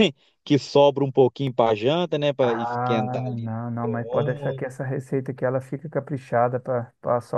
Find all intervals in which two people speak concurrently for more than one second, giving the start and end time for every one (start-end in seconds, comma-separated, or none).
2.4-4.6